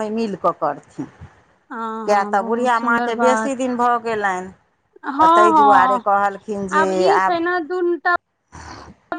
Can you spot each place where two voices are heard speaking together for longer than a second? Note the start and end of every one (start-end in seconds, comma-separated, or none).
2.1-3.5